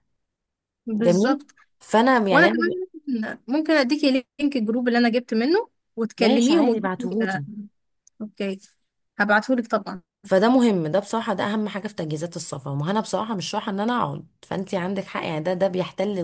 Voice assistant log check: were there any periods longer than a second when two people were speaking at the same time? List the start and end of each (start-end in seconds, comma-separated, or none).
6.2-7.4